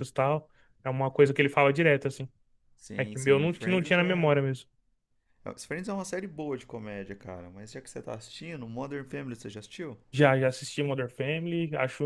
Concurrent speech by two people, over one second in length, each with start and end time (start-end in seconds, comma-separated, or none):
3.0-4.3